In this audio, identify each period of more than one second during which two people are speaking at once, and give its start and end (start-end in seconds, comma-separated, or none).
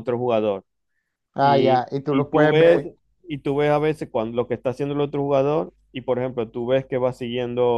1.4-2.8